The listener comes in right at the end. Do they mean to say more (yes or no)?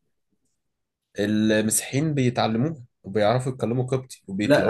yes